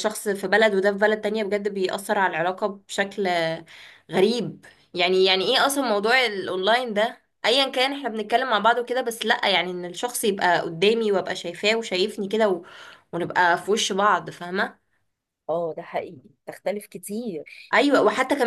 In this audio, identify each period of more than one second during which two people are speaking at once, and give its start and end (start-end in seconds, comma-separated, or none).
none